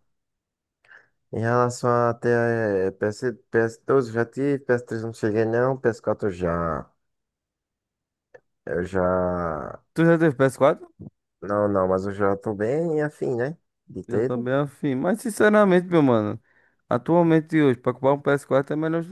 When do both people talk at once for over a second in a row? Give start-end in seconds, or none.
none